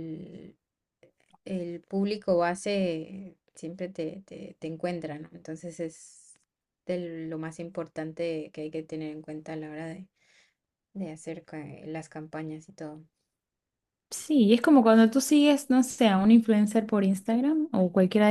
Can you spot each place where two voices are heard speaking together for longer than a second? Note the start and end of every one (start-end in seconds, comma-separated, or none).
none